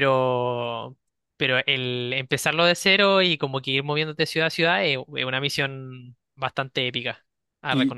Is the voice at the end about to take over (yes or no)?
yes